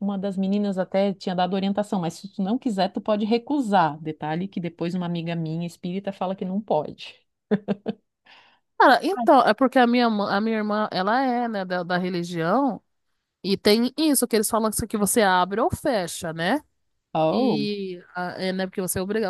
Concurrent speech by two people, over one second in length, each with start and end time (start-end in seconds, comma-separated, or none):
none